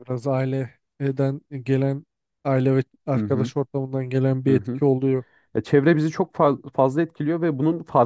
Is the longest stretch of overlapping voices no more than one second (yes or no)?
yes